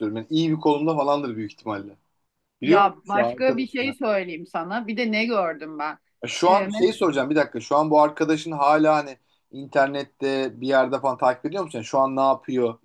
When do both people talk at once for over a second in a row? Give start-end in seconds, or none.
2.6-3.9